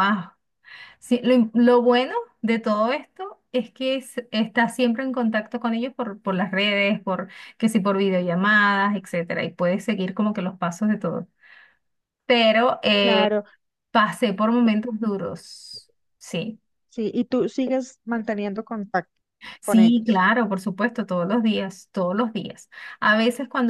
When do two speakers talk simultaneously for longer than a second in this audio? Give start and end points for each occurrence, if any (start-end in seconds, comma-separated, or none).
none